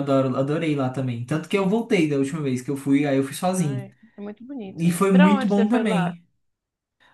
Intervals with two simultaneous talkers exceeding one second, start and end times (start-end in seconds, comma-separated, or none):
4.8-6.2